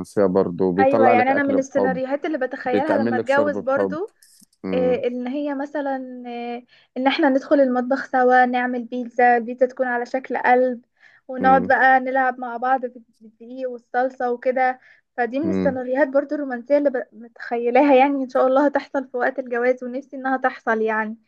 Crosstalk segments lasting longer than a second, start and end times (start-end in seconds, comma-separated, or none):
0.8-2.0, 2.6-4.0